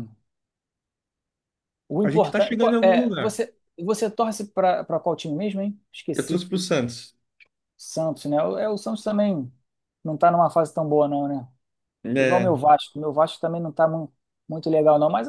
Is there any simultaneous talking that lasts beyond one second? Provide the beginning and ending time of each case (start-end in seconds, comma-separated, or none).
2.0-3.4